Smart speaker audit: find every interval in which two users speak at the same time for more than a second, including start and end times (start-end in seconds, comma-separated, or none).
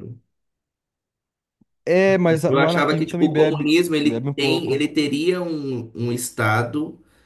2.5-4.9